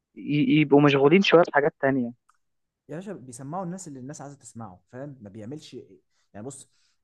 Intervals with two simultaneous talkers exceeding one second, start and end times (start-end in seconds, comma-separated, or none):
none